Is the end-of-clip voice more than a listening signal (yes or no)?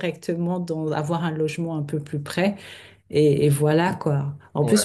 no